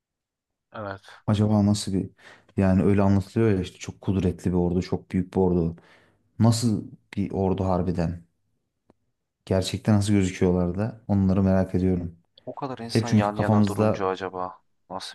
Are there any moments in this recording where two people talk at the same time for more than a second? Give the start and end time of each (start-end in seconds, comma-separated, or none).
12.9-14.1